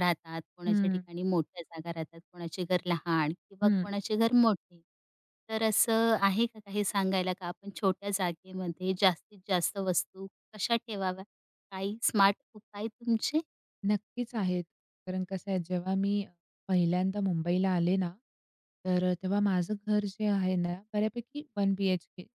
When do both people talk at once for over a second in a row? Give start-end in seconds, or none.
none